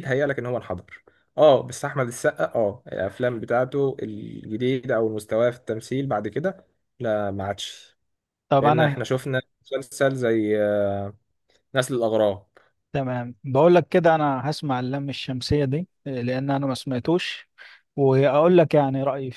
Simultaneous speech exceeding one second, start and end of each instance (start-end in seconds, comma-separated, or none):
none